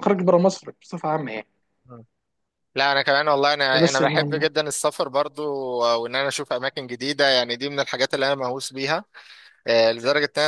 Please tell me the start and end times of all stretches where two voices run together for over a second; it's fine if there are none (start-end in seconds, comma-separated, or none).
none